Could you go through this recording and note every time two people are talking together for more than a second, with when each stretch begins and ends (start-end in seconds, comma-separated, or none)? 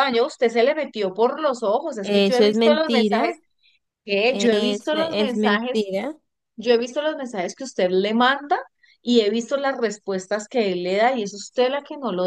2.0-3.4, 4.3-5.9